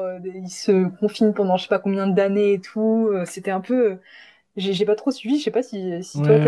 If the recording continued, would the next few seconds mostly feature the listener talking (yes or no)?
yes